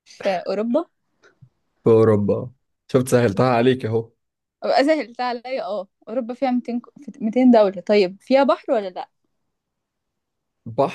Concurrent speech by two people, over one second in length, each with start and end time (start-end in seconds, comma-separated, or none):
none